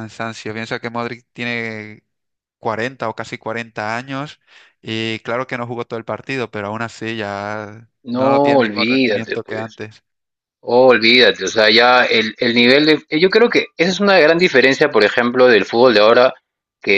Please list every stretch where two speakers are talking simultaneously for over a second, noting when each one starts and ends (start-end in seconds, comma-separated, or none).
8.0-9.8